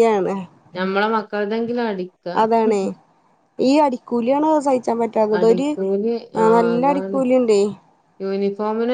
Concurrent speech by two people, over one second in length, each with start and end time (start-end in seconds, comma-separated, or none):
none